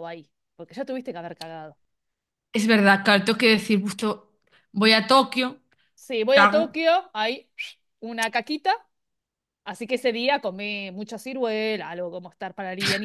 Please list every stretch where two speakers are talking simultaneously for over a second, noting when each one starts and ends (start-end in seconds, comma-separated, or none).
none